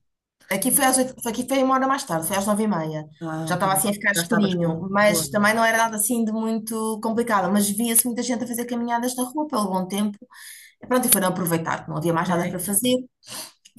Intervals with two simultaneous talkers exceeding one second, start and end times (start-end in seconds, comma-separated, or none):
3.4-5.3